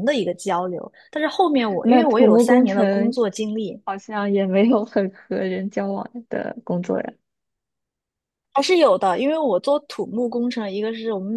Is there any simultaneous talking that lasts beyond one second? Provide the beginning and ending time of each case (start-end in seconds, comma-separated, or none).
1.8-3.1